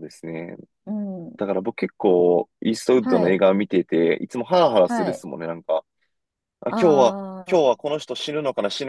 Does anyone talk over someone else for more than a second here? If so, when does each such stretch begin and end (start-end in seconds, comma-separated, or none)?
none